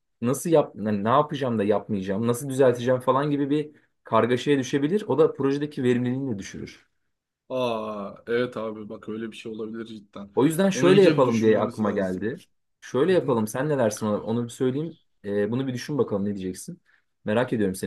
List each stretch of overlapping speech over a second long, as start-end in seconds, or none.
10.7-12.3